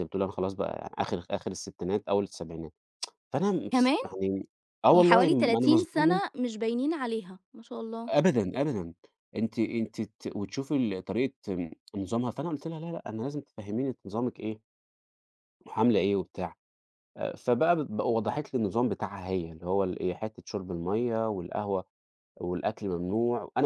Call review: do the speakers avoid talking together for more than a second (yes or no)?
no